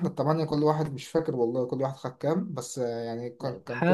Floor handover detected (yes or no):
yes